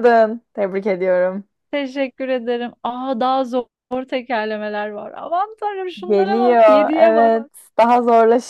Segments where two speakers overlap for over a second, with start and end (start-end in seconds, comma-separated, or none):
6.1-7.3